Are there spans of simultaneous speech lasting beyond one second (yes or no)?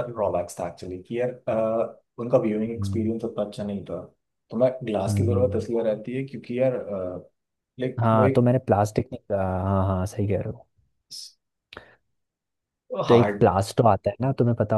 no